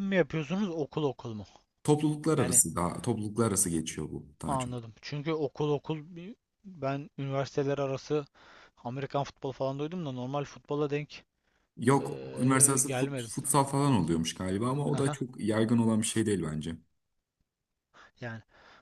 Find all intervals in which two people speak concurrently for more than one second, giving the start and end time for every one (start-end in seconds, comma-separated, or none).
12.0-13.3